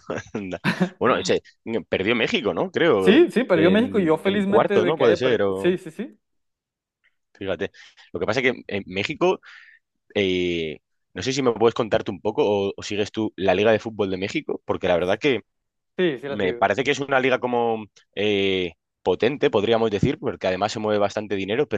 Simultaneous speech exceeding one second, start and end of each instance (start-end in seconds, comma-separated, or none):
3.0-5.8